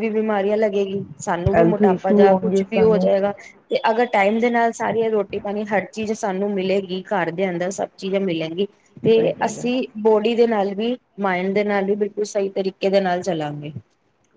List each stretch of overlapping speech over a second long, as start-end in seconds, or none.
1.6-3.0